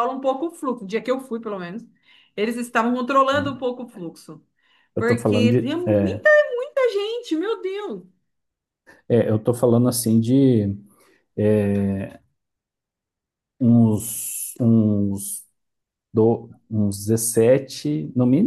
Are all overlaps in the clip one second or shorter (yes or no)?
no